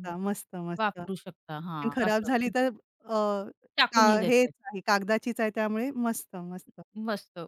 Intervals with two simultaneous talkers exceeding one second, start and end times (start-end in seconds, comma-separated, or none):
0.8-2.5